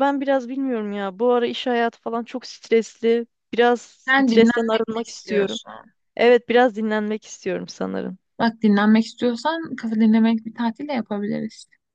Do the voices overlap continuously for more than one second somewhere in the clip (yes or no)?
yes